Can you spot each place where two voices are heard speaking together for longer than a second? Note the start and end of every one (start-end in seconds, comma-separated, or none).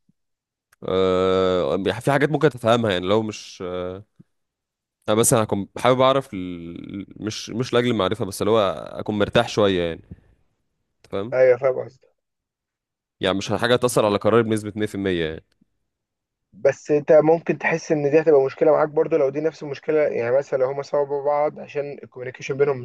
none